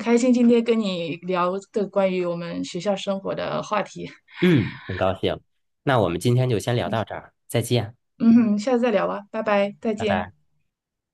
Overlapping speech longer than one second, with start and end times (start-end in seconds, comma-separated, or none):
none